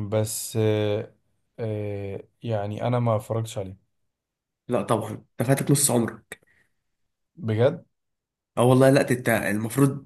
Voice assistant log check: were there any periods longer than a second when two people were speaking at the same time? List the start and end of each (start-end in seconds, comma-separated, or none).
none